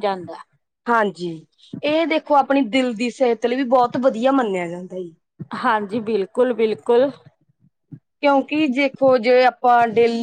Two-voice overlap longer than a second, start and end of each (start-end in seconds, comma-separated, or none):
none